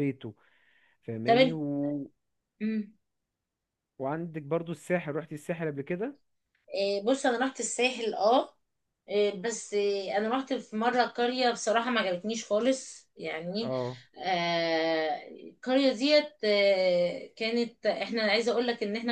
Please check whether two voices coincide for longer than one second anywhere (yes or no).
no